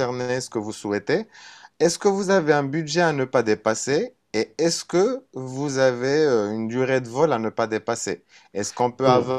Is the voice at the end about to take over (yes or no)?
no